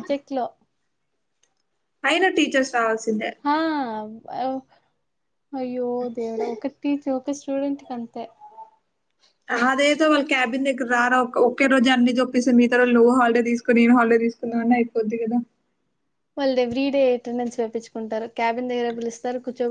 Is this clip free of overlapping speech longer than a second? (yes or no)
yes